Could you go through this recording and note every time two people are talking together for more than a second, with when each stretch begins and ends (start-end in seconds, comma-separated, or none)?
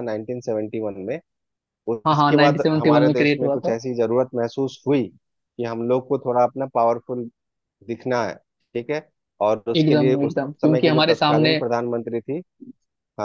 2.1-3.8, 9.8-11.6